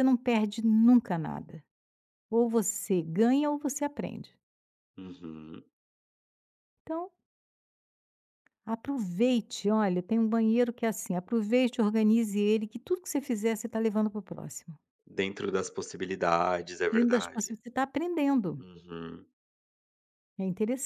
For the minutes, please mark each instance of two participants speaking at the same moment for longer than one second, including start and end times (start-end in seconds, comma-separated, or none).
none